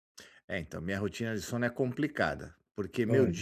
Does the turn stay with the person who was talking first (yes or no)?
yes